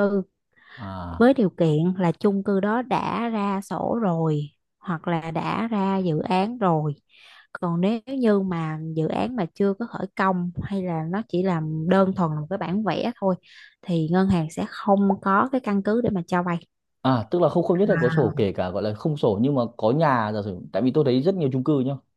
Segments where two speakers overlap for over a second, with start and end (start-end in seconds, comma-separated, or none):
none